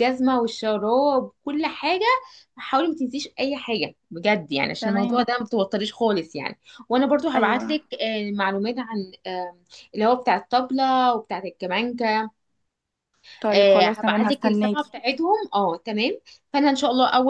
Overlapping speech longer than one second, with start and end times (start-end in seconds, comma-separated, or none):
13.5-14.9